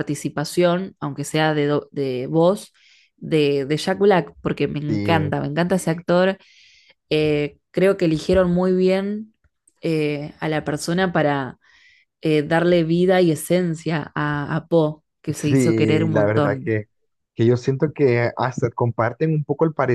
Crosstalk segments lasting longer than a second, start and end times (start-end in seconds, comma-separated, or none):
15.4-16.8